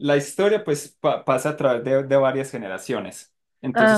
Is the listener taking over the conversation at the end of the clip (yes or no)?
no